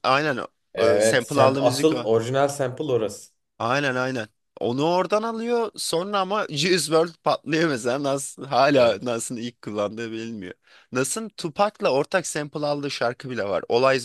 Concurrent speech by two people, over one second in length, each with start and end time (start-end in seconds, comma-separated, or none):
0.8-2.1